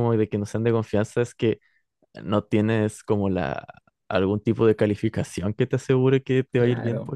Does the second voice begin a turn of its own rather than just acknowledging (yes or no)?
yes